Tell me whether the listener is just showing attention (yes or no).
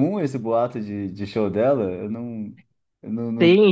no